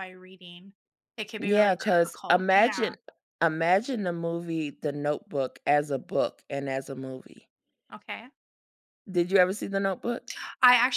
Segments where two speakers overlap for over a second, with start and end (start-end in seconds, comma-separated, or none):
1.4-2.9